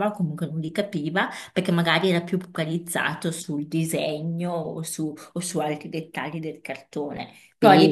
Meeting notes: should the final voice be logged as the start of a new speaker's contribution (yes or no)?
no